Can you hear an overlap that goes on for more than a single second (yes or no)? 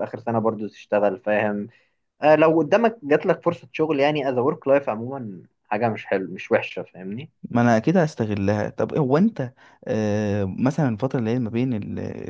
no